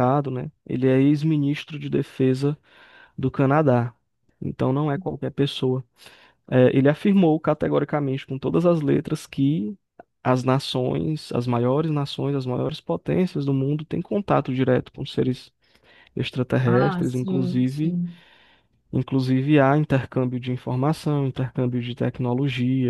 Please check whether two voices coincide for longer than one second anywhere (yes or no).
yes